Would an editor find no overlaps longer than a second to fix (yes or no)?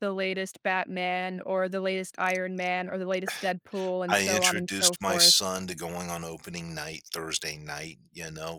no